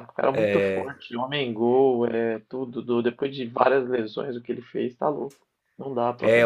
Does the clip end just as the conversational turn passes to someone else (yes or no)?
yes